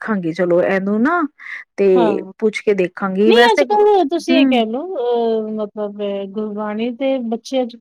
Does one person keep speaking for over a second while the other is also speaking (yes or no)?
yes